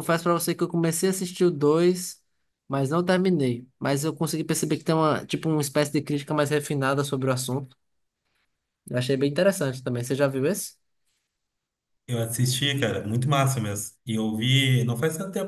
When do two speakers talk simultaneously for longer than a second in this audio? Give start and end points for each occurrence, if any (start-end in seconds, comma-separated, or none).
none